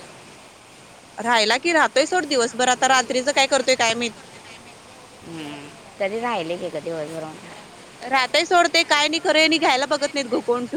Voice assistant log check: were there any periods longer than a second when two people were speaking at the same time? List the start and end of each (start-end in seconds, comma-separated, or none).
none